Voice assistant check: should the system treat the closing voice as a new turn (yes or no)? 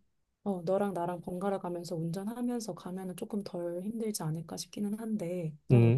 yes